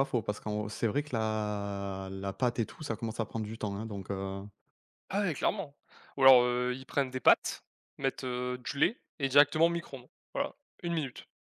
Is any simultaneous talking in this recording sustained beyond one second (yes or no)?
no